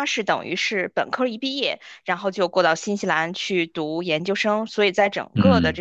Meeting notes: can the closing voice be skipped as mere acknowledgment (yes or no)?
yes